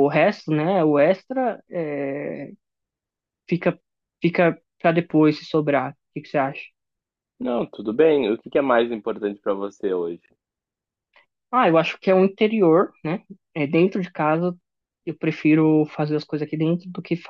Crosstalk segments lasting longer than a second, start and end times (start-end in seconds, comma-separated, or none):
none